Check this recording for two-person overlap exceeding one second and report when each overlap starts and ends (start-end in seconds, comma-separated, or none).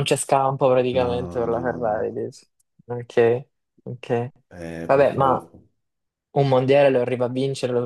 0.9-2.1